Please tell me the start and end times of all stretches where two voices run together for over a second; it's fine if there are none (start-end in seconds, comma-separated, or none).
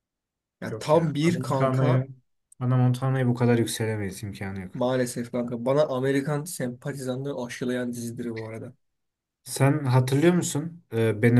0.7-2.1